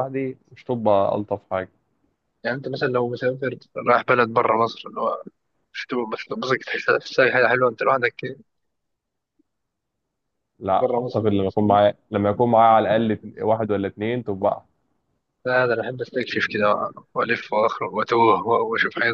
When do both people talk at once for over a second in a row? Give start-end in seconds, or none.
none